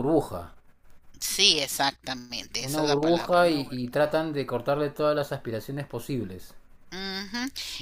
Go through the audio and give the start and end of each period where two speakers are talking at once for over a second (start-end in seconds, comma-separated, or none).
2.6-4.2